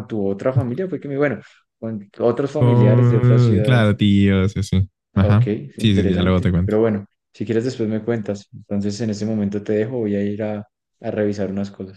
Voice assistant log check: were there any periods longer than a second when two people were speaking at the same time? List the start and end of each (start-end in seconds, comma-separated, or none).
2.6-4.0, 5.1-6.8